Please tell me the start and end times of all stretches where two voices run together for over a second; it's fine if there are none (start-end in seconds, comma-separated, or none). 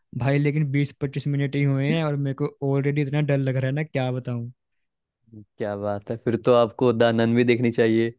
none